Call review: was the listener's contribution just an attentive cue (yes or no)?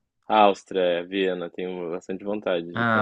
no